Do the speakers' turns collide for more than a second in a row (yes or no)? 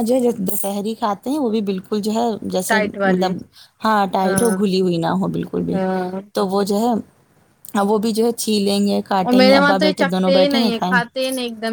yes